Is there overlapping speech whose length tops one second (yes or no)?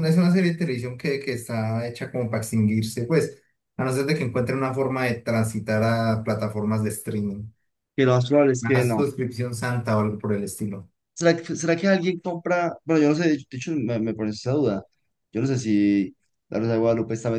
no